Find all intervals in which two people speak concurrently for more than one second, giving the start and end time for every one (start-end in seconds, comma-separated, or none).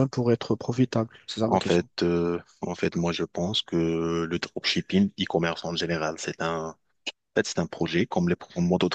none